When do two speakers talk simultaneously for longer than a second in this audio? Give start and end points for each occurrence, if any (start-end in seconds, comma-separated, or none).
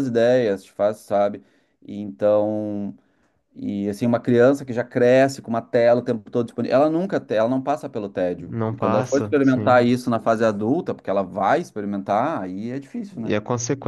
8.4-9.9